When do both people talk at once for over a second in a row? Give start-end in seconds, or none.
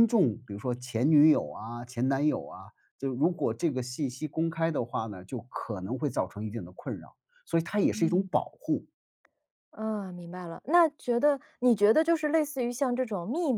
none